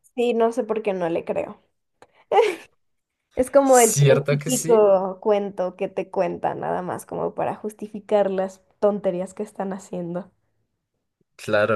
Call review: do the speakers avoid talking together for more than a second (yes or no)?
no